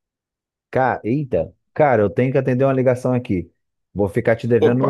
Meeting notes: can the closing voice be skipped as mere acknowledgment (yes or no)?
yes